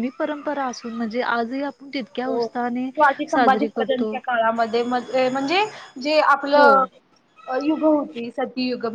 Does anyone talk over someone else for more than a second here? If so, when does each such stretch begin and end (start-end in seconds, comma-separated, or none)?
none